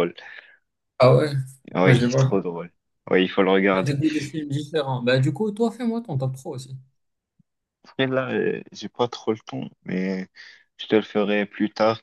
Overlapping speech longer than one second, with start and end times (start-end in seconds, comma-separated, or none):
none